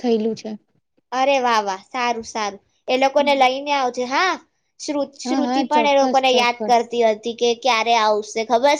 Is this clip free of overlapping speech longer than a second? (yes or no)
no